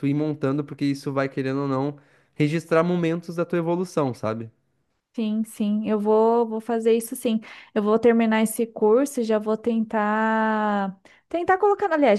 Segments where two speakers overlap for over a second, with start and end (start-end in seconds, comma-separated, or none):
none